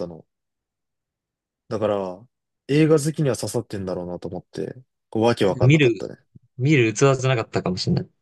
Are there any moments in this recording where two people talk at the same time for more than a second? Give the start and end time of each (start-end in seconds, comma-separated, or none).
none